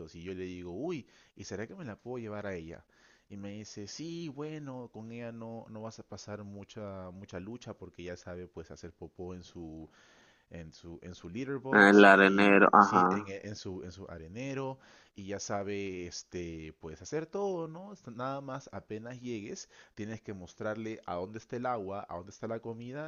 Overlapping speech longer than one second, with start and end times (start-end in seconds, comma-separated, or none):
11.7-13.3